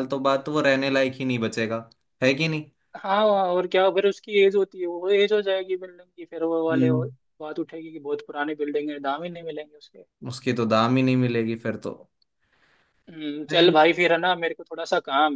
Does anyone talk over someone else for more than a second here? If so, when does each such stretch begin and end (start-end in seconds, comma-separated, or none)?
none